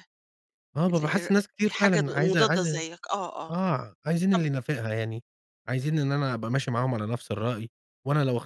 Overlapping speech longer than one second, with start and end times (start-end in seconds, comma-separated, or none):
0.9-2.8